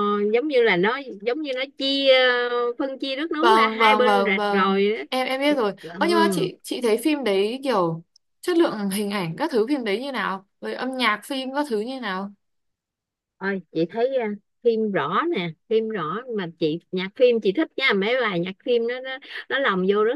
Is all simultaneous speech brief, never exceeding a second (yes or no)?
no